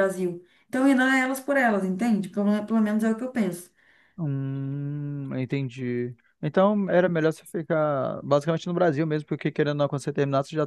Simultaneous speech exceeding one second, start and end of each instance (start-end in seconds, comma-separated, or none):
none